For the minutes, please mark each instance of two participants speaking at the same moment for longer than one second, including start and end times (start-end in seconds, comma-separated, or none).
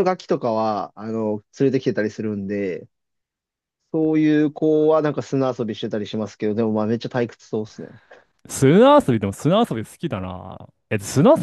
none